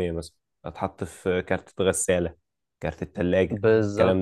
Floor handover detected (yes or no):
yes